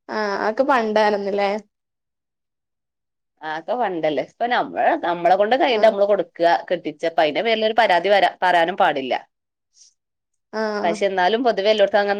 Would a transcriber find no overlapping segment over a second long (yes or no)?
yes